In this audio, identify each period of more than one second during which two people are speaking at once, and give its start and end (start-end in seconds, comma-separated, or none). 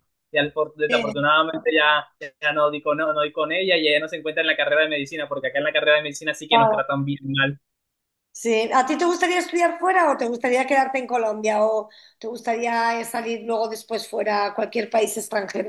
none